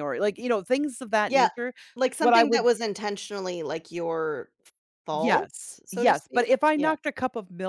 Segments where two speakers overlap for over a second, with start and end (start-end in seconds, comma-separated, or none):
5.1-6.9